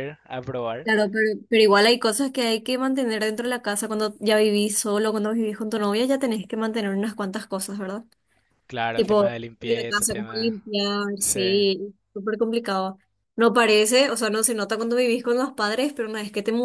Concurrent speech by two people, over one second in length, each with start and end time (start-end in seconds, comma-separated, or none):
8.9-10.5